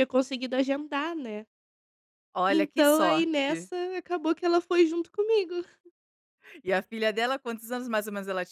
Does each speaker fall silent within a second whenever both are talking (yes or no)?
no